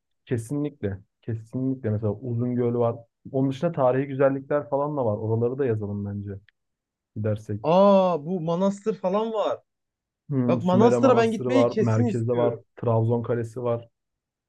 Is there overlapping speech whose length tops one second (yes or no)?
yes